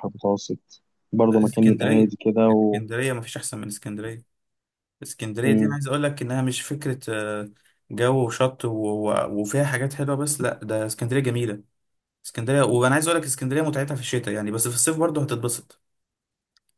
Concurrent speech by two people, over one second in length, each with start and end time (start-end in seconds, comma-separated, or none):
1.3-2.8